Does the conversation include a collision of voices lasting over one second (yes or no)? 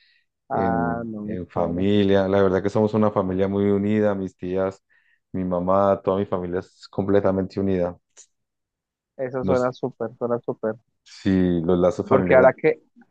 yes